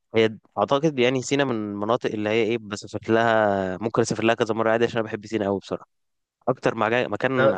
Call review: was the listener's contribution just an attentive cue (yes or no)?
yes